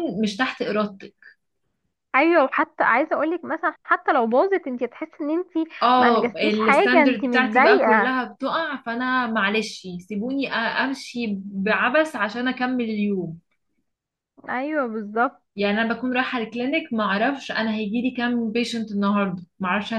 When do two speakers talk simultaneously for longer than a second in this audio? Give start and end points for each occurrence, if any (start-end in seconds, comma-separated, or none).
5.8-8.2